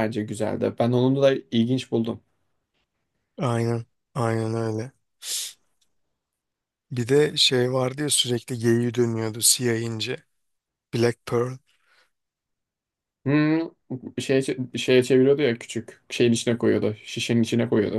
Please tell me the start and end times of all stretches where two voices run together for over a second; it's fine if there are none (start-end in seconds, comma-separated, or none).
none